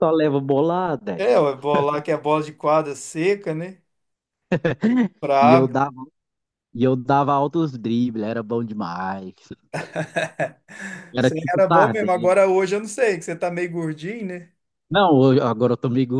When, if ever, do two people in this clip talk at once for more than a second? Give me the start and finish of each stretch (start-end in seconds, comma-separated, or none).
11.2-12.4